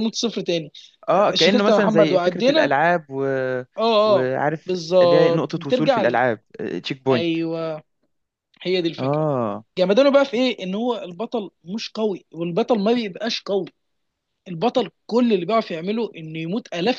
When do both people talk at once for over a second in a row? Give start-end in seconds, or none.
1.3-2.7, 4.1-6.2